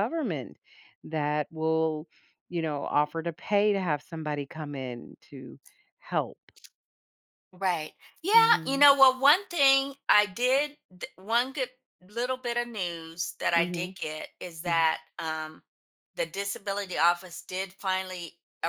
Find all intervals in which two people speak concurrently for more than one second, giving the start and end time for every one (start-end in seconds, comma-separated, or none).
none